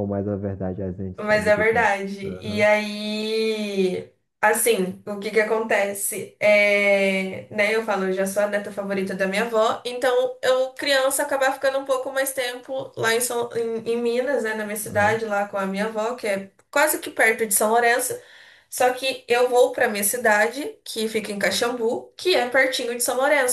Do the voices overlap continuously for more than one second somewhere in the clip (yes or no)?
yes